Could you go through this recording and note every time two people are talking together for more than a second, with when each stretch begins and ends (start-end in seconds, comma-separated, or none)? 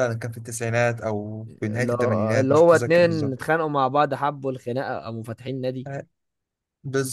1.5-3.5